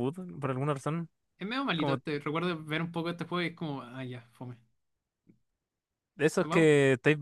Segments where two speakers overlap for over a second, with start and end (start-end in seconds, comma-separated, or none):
none